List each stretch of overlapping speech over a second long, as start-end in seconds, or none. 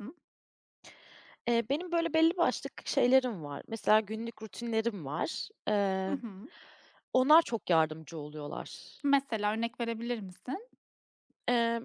none